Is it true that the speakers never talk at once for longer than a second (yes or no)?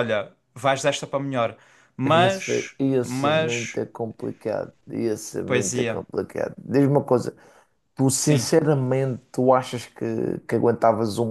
no